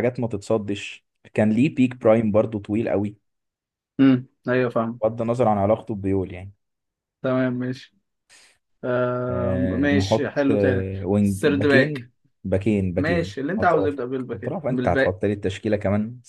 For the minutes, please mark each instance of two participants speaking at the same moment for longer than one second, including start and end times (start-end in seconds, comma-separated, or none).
9.3-12.1, 13.0-15.2